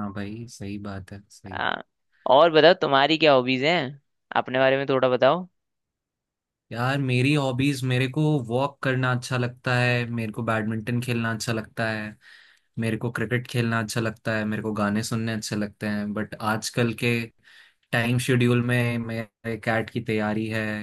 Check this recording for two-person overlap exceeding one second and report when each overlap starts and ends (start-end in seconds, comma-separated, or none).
none